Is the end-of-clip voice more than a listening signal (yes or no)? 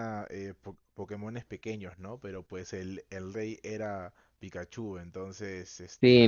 yes